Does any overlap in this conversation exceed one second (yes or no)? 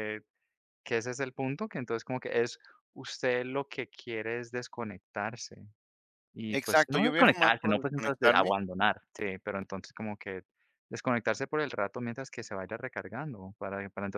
yes